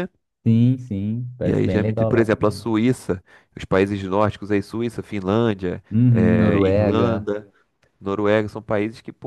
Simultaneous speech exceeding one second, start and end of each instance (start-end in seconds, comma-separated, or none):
1.4-2.7, 5.9-7.3